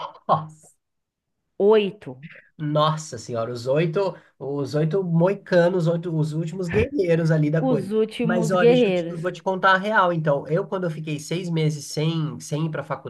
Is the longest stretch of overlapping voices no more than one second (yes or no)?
no